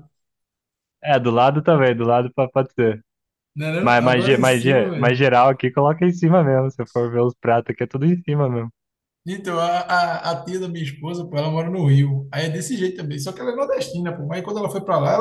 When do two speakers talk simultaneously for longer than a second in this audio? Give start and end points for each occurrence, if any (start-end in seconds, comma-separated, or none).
3.8-5.3